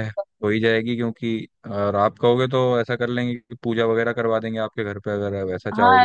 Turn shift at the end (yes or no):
yes